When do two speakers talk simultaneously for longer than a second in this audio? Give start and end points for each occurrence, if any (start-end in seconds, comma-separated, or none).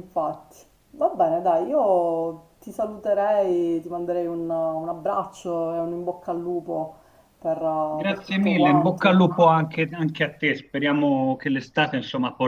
8.0-9.2